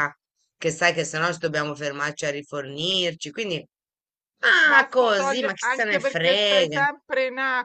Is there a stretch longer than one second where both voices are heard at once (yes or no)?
yes